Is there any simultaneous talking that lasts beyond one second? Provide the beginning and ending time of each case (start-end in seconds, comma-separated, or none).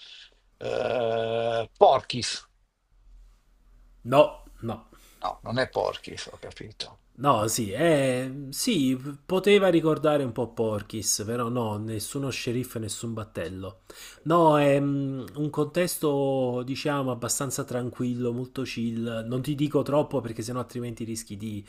none